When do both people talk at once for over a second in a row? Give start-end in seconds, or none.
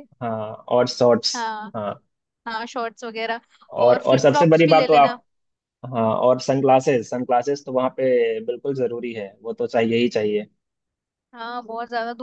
3.9-5.2